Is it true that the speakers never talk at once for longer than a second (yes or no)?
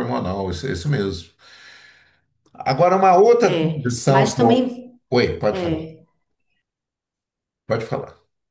no